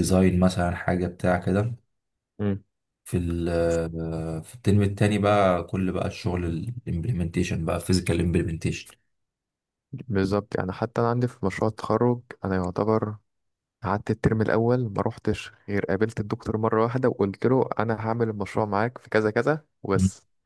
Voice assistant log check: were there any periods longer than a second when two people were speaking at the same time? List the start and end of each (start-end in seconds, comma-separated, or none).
none